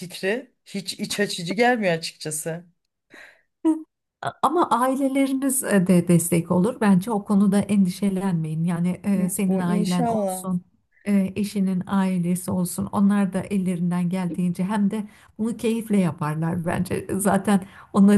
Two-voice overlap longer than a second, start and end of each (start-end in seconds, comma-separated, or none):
9.1-10.5